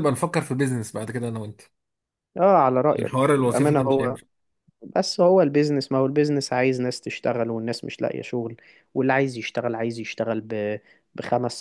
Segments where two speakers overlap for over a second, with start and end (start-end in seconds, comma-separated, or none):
2.9-4.2